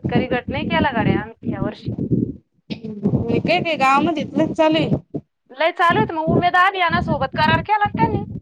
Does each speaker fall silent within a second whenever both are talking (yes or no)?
yes